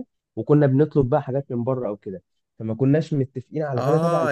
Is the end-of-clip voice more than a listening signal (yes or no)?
yes